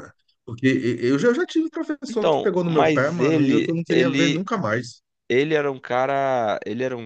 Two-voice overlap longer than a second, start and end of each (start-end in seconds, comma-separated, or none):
2.1-4.5